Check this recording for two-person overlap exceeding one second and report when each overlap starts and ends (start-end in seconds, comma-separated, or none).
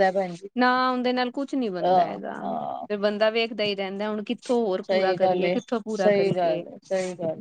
4.9-6.6